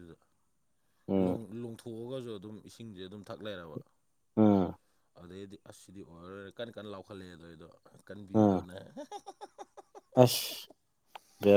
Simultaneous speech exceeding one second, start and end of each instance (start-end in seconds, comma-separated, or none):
none